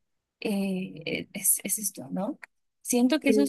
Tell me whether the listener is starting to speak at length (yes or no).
no